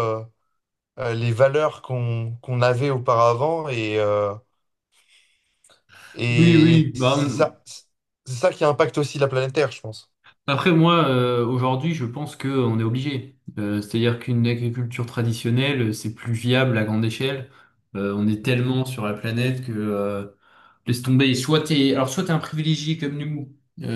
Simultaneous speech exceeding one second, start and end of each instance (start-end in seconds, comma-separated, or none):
6.3-7.5